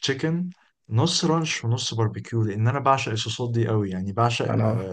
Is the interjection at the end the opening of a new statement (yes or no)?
no